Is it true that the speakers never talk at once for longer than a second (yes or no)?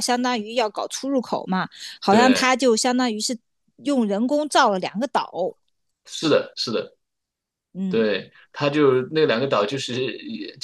yes